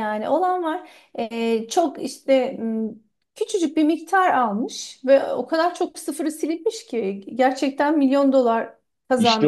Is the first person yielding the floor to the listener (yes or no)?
yes